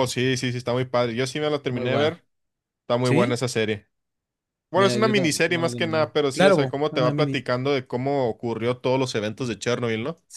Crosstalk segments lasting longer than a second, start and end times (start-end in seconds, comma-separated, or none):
4.7-7.4